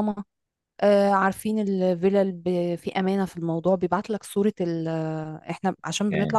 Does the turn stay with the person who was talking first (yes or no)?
yes